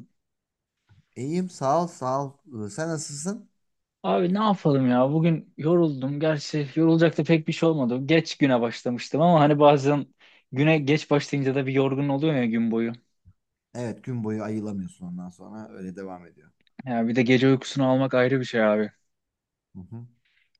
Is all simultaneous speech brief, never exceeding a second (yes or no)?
yes